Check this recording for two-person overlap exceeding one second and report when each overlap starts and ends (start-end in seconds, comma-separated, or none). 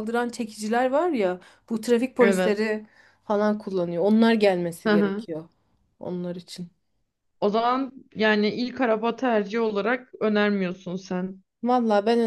none